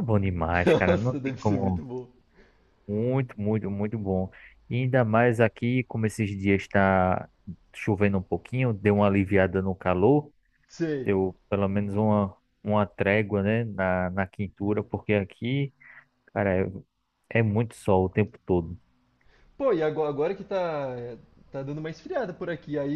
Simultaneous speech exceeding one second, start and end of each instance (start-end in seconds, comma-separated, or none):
0.7-1.9